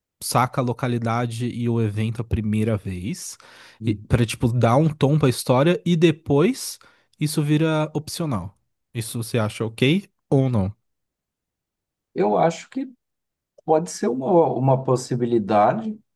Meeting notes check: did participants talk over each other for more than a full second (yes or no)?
no